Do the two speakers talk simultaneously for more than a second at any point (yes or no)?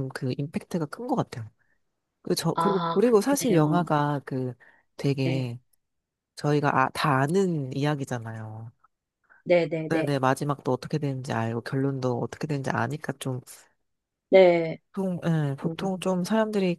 yes